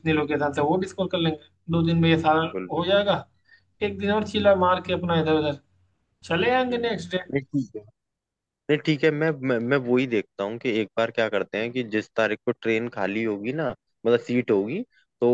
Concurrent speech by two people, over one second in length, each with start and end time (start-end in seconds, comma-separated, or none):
none